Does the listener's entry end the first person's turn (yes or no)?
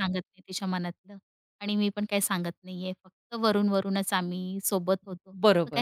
yes